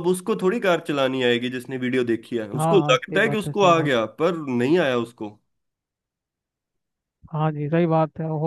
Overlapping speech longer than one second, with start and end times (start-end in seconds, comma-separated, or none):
2.6-4.0